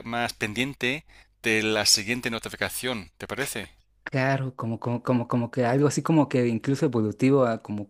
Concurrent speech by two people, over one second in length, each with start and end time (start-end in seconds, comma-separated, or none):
none